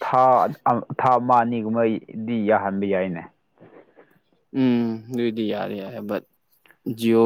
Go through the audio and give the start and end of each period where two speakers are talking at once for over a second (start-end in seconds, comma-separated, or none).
none